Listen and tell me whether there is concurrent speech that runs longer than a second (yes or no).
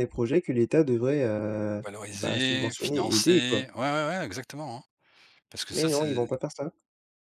yes